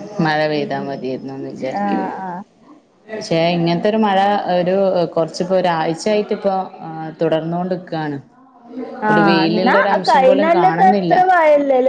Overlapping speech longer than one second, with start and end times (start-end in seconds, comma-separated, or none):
9.1-11.2